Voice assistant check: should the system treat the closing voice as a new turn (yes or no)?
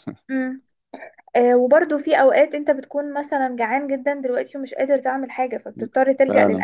yes